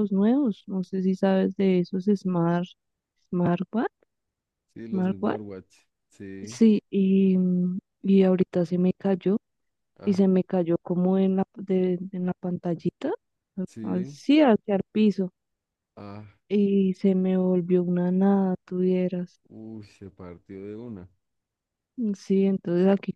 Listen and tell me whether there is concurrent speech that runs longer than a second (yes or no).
no